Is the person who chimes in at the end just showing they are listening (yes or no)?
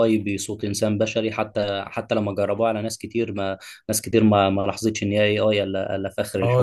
no